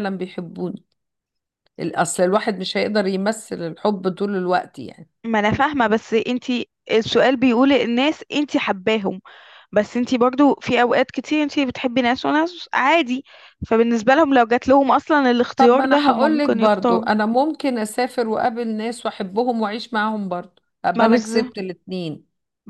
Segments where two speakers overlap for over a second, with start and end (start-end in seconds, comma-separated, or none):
15.6-17.1